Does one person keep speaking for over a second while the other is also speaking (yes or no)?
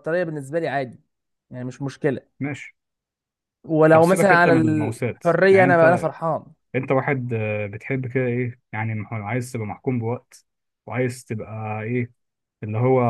yes